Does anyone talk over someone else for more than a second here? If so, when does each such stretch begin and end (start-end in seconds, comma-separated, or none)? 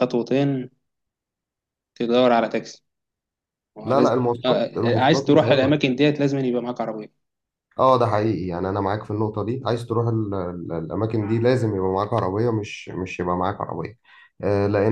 3.8-5.8